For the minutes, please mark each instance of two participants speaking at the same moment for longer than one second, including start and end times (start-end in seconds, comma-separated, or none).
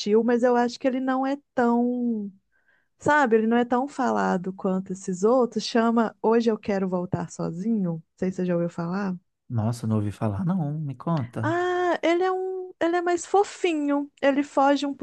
none